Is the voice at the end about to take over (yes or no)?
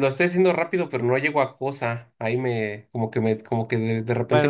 yes